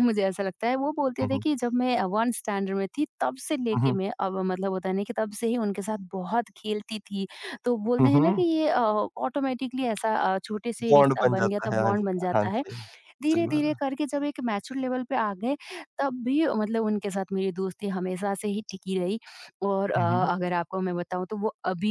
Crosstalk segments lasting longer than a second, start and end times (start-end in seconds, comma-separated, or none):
10.9-12.6